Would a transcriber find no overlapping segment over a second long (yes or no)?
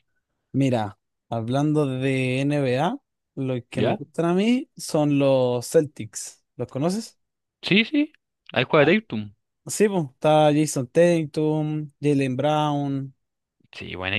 yes